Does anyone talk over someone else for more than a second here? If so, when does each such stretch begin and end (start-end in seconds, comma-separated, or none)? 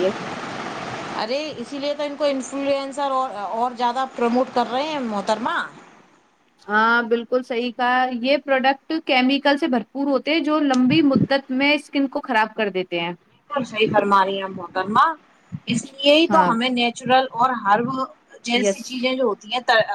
none